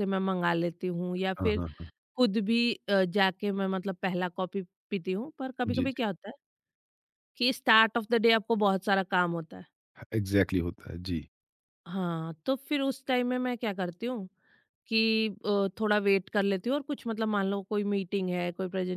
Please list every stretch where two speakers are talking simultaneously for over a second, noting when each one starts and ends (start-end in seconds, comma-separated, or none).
none